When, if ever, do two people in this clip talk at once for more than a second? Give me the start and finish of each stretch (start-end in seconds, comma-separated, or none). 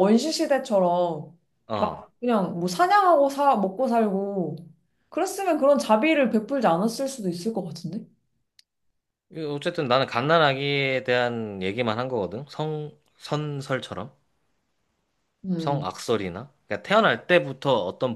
none